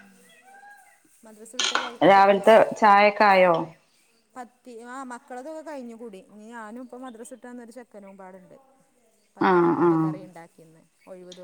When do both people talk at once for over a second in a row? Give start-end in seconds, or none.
none